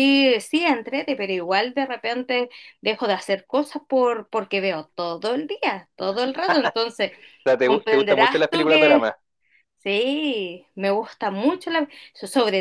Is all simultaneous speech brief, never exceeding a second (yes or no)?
no